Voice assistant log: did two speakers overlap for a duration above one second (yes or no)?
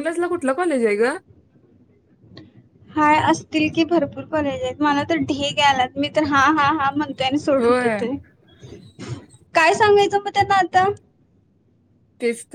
no